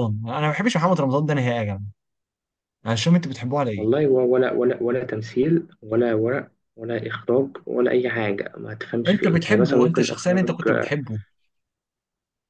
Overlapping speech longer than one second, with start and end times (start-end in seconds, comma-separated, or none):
9.1-10.6